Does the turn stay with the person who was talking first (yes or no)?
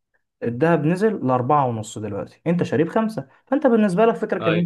yes